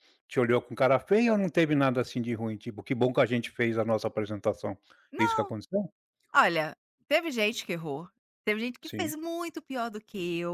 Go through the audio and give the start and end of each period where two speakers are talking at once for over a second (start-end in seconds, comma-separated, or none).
none